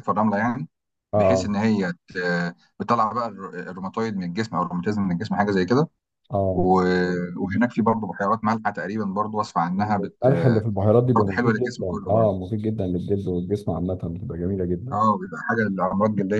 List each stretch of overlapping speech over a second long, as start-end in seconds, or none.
11.1-12.3